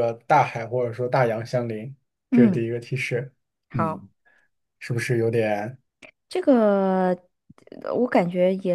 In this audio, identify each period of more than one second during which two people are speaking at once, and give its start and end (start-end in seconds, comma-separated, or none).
none